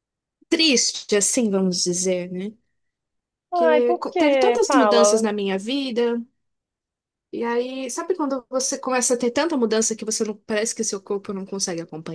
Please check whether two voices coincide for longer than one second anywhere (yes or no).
yes